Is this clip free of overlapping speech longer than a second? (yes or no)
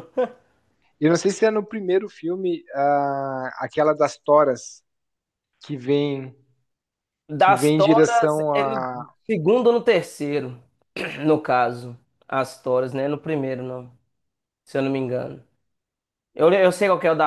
no